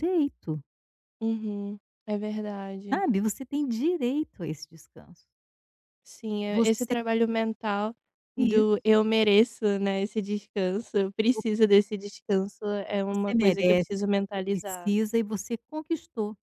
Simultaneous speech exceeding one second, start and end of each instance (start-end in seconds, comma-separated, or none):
13.1-14.9